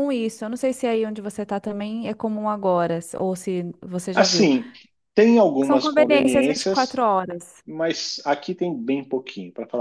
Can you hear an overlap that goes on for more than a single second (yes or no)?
yes